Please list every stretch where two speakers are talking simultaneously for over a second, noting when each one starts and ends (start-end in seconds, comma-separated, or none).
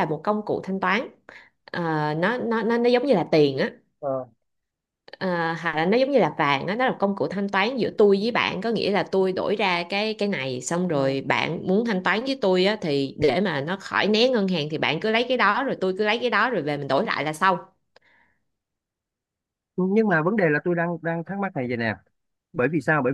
none